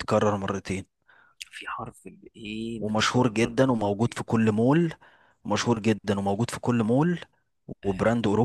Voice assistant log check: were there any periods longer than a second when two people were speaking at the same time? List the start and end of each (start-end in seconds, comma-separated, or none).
2.8-4.2